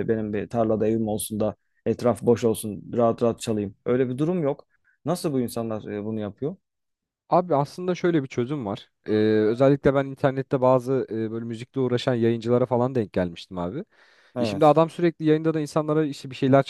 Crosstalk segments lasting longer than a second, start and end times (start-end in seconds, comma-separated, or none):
none